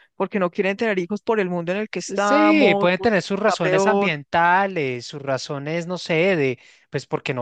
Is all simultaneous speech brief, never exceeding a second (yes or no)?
no